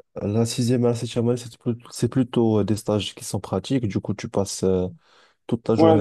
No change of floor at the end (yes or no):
no